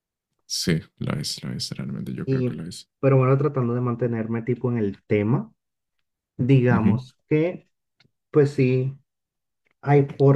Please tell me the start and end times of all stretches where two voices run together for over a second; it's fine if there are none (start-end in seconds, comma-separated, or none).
none